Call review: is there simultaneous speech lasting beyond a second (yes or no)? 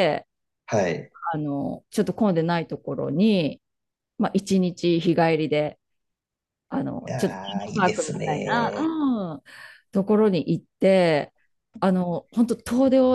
yes